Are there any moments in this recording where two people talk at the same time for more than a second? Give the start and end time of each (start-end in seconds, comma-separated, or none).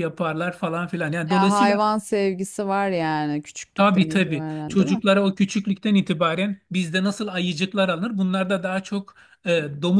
3.8-5.0